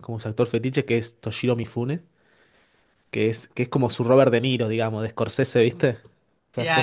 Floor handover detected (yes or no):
yes